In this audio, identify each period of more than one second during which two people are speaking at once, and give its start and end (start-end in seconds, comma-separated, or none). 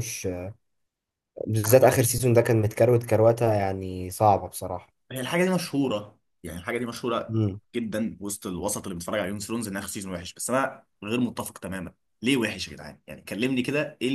none